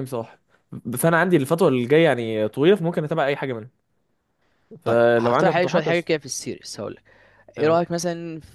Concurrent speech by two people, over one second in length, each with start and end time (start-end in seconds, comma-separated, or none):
4.8-6.2